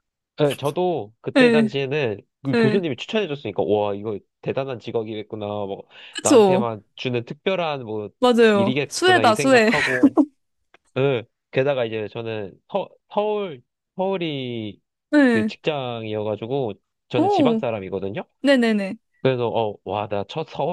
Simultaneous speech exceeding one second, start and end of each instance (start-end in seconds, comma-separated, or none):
8.5-9.7